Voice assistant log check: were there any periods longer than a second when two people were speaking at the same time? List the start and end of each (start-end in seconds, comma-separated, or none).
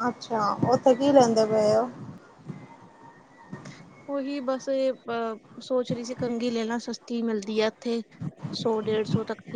none